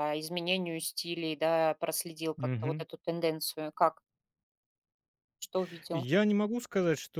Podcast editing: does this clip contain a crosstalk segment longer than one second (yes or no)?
no